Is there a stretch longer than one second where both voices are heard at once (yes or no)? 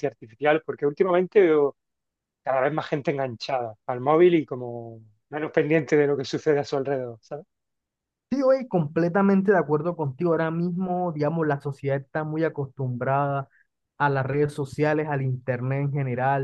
no